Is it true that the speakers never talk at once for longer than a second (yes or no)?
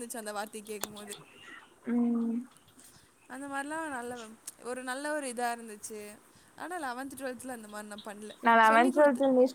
yes